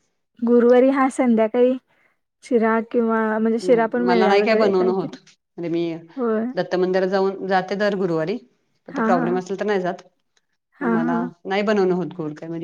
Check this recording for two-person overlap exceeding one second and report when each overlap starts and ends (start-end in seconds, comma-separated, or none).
3.6-5.2